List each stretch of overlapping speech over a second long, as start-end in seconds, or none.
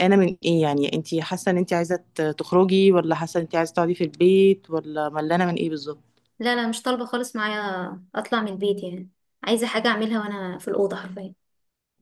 none